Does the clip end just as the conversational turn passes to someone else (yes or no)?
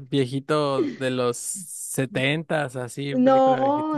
yes